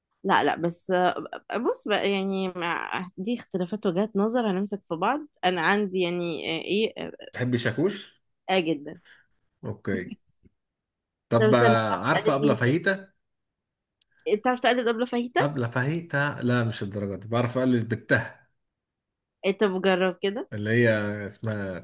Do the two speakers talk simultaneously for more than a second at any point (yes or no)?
yes